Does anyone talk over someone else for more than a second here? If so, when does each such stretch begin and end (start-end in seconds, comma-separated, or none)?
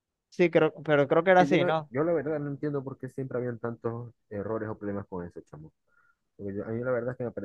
none